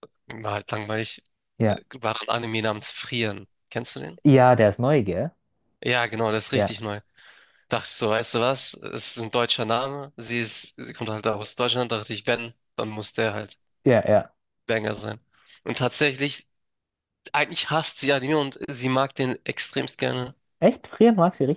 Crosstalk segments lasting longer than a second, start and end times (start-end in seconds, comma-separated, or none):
none